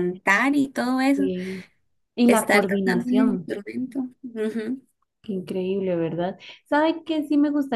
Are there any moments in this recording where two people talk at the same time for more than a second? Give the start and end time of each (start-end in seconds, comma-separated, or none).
2.3-3.5